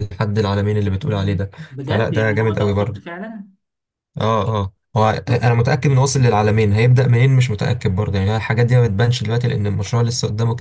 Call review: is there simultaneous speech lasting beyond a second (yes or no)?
yes